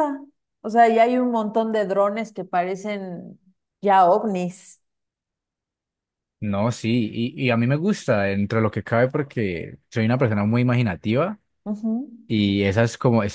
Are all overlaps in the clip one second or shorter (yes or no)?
yes